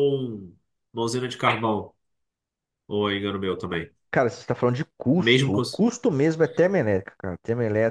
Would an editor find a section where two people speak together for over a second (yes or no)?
no